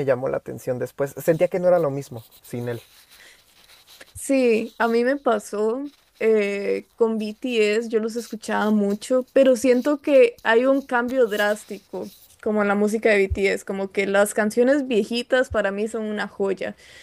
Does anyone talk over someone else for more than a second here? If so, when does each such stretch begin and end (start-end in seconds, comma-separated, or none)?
none